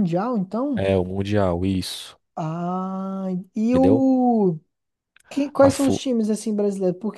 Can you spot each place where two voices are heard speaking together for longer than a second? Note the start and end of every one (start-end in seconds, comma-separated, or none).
none